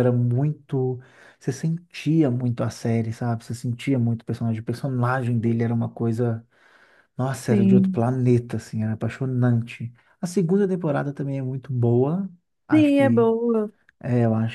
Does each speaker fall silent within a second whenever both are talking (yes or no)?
yes